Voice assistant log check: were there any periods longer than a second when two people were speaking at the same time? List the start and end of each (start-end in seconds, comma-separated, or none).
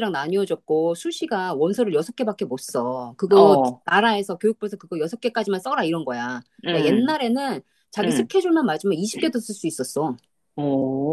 none